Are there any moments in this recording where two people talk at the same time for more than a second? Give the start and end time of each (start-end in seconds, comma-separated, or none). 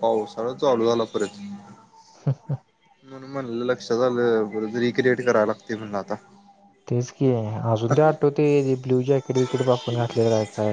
none